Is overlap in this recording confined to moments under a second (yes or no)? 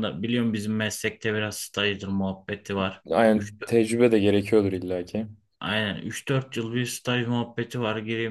yes